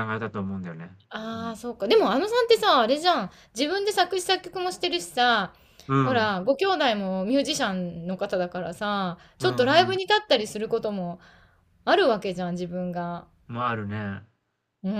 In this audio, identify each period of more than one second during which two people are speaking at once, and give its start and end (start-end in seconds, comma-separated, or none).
none